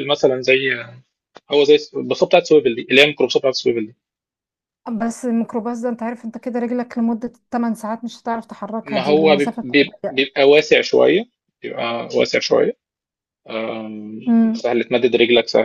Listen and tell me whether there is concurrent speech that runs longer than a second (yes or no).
yes